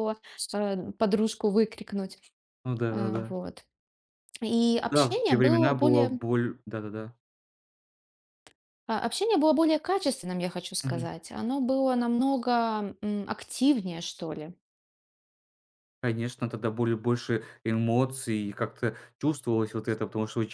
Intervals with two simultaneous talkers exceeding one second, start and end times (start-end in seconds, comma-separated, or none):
4.8-6.2